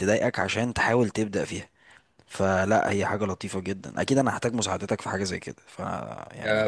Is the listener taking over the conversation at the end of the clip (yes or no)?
yes